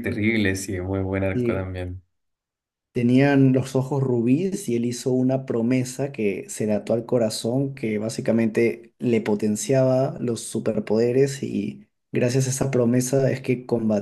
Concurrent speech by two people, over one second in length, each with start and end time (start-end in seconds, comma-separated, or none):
none